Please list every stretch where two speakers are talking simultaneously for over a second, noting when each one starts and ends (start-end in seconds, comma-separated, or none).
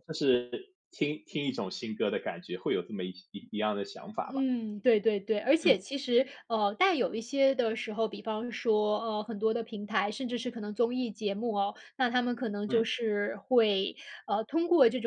none